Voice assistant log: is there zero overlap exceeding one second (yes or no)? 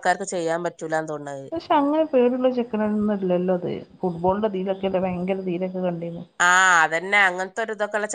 yes